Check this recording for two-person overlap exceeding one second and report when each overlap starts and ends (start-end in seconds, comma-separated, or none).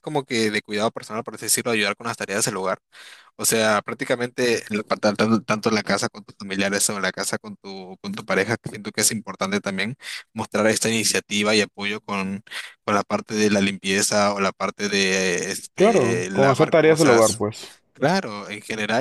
15.8-17.4